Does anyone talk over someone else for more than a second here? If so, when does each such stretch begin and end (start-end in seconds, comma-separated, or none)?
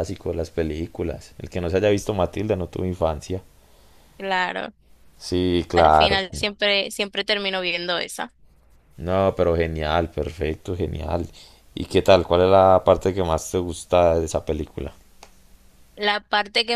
none